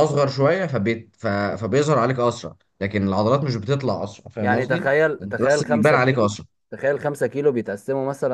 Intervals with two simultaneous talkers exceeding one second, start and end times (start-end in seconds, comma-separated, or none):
4.4-6.3